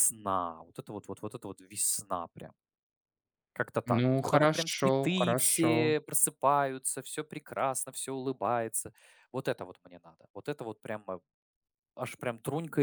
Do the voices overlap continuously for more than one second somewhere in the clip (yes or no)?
yes